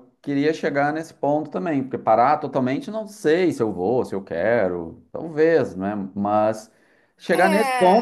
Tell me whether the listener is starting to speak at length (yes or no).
no